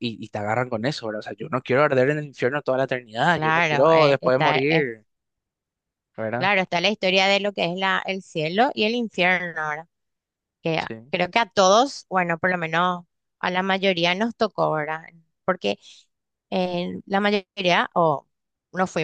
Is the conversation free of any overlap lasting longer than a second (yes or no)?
no